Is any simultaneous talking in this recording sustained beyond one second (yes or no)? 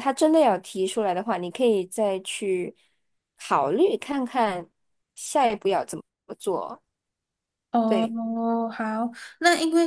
no